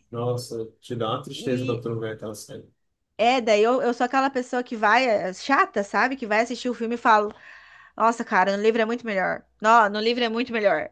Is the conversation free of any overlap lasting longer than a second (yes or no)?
yes